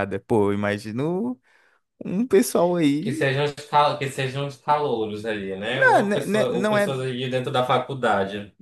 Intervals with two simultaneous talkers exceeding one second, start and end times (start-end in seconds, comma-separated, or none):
5.7-7.0